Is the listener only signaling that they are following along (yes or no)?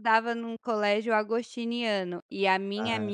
yes